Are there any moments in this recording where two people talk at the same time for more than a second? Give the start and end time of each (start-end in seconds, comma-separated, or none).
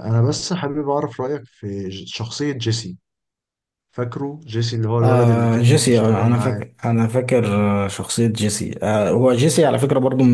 5.0-6.7